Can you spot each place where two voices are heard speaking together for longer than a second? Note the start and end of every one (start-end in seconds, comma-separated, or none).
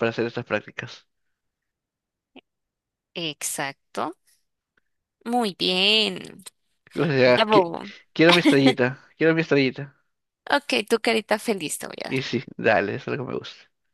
none